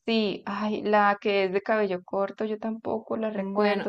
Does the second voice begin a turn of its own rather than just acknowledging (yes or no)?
no